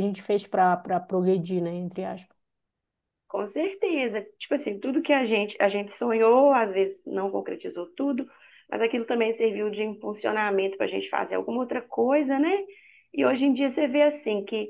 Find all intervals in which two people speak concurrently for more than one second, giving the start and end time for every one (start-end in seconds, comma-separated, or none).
none